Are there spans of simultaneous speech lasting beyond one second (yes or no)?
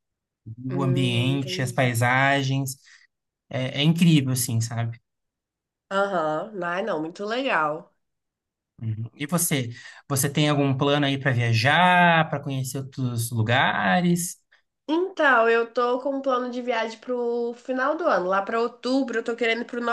yes